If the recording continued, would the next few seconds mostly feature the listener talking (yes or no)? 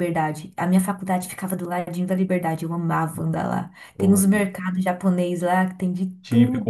yes